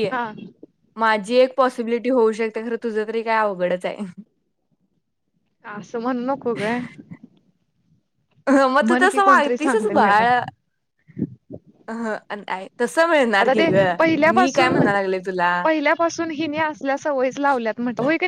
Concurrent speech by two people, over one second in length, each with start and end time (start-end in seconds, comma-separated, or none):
8.9-10.2